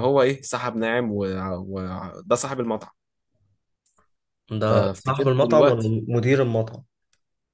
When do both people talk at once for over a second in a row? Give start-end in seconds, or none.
4.6-5.9